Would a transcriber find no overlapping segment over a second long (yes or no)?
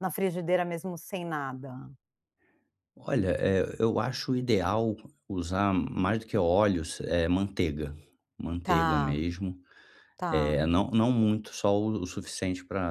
yes